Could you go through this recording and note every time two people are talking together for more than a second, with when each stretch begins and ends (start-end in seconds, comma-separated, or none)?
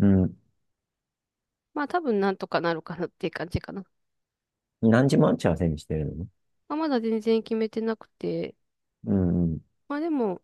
none